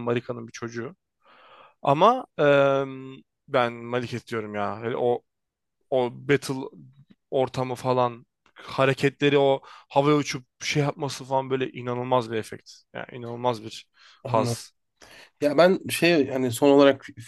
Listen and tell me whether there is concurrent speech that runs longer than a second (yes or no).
no